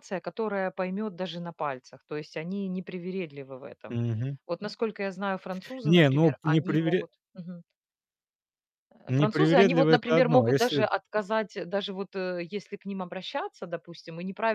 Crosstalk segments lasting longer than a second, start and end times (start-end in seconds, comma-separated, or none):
5.8-7.1, 9.1-10.9